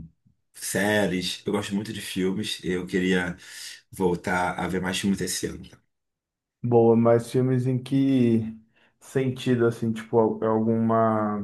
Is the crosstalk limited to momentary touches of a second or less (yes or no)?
yes